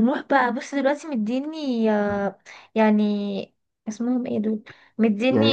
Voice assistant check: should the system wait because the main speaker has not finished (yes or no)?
yes